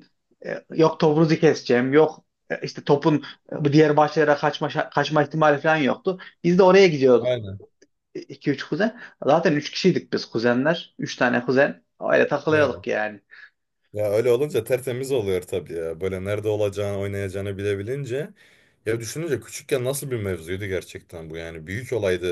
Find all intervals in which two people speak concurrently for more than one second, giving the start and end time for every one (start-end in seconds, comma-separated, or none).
none